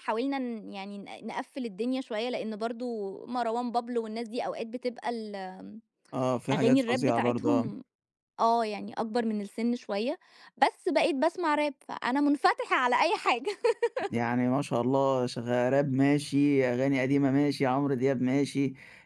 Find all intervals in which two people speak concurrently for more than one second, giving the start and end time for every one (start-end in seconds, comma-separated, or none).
6.5-7.7